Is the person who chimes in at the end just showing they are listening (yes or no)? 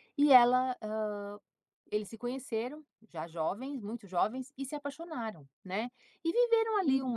yes